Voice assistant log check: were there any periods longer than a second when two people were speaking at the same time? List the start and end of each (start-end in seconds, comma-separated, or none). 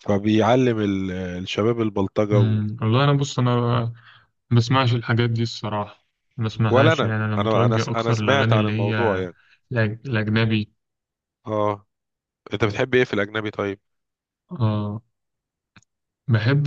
6.7-9.3